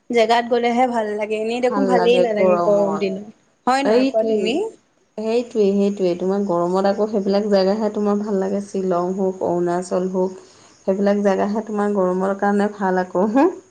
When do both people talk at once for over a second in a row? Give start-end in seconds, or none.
1.6-3.2